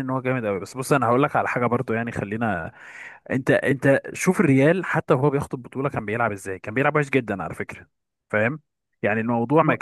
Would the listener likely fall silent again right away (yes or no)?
yes